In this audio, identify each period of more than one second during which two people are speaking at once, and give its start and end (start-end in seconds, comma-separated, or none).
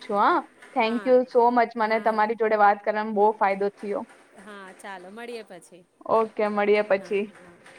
0.9-2.5